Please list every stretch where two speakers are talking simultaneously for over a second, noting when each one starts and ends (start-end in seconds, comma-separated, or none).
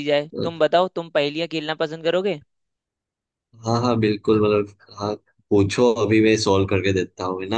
none